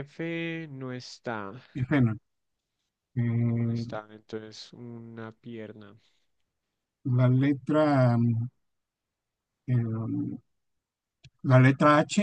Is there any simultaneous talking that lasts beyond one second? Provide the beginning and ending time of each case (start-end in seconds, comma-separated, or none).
none